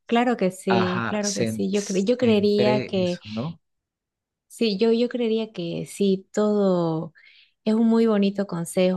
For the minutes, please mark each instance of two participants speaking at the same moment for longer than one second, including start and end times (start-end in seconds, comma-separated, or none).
0.7-3.2